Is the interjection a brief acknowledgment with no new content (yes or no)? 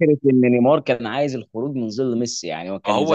no